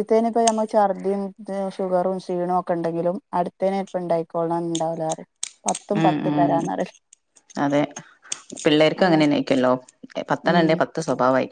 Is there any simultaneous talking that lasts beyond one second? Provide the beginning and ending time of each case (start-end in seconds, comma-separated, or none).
none